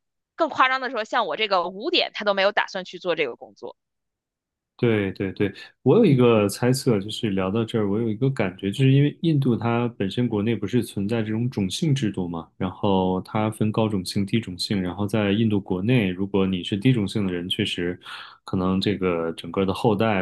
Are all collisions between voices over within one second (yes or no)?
yes